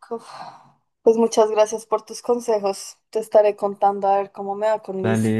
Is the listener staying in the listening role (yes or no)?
no